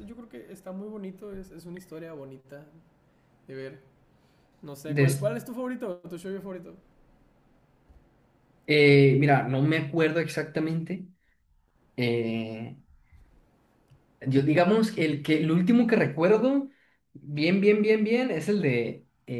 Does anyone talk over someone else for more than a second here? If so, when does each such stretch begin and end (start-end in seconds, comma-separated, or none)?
none